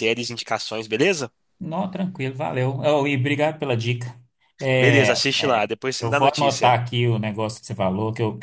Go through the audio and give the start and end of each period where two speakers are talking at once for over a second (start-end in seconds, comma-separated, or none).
4.8-6.8